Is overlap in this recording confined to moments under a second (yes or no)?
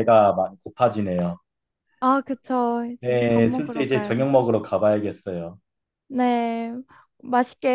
no